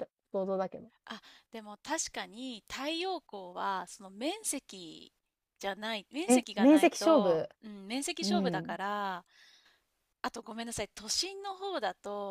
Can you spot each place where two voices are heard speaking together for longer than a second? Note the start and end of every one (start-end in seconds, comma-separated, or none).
6.3-7.5